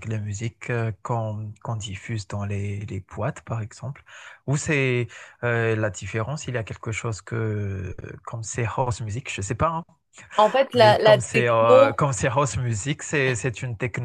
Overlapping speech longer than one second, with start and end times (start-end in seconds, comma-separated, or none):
10.8-12.0